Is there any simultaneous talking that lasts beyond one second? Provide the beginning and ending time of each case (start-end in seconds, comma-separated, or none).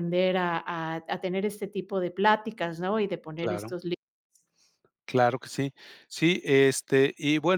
none